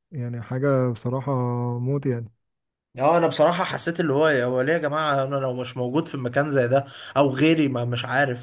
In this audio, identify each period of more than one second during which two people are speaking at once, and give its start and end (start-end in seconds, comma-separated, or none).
none